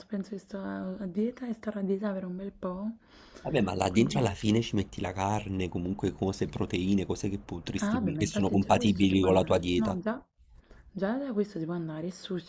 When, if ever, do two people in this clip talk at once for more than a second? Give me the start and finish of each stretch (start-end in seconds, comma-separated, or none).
7.8-10.0